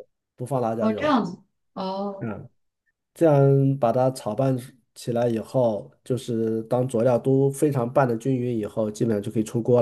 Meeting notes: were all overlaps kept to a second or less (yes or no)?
yes